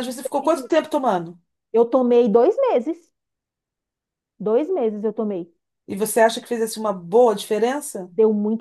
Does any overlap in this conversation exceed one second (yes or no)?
no